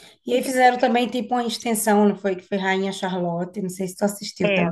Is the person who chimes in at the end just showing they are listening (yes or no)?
no